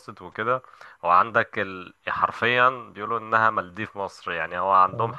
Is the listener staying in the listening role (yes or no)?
yes